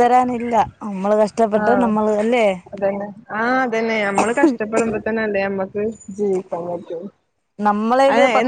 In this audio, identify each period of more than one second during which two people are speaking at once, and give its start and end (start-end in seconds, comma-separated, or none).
none